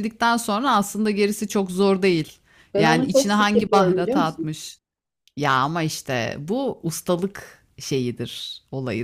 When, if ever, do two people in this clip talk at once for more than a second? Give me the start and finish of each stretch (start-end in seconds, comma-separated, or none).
2.8-4.5